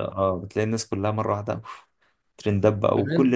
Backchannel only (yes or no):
no